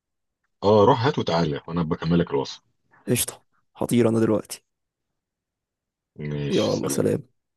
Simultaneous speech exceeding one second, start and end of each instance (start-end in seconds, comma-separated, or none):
none